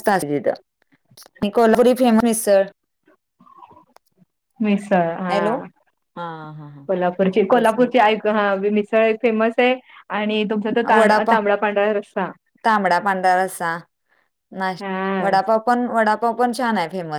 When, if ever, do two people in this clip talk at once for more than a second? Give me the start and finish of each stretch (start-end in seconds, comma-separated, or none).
none